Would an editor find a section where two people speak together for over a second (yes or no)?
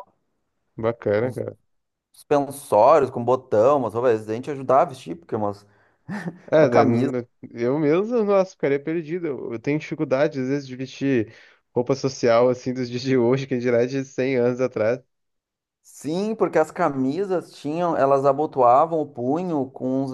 no